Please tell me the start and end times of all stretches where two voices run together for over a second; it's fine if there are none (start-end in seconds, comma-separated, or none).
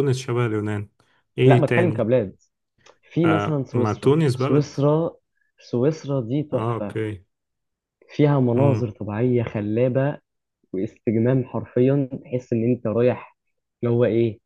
3.2-4.8